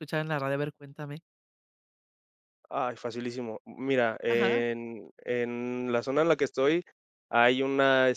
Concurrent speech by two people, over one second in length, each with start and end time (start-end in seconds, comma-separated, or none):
none